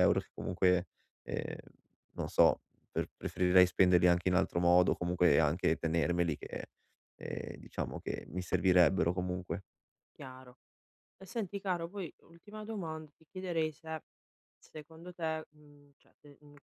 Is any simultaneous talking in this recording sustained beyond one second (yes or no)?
no